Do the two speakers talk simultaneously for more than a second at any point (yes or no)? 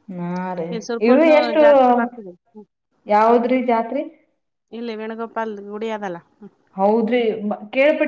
no